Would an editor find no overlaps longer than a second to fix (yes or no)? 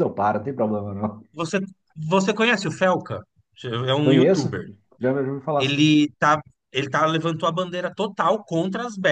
yes